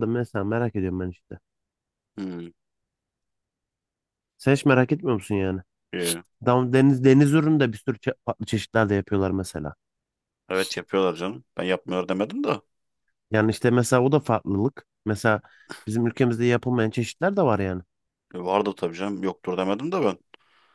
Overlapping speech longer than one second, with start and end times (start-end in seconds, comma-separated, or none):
none